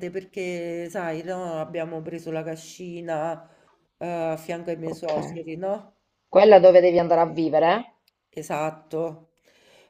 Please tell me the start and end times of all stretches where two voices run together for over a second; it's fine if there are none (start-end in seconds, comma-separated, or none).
none